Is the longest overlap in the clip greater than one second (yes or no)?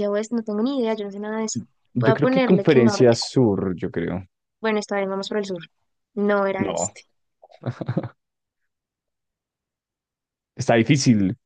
yes